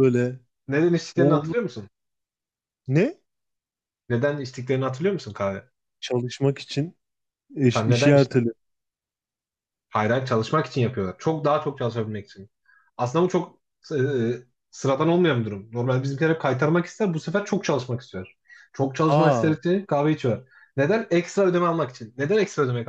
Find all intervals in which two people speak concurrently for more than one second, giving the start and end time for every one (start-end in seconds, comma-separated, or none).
none